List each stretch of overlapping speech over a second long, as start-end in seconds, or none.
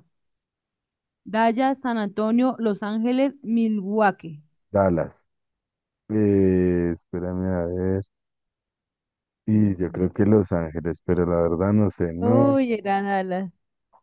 none